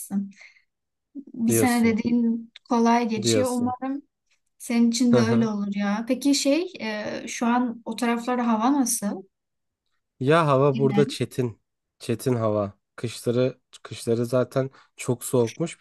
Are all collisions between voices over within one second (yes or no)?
yes